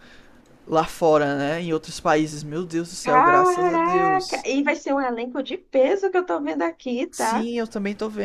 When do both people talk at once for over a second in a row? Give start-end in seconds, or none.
3.0-4.5